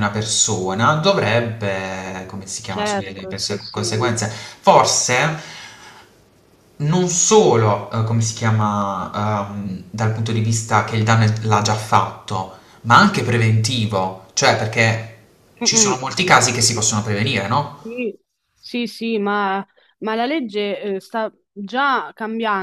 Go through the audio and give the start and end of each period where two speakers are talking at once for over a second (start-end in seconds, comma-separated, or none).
2.7-4.0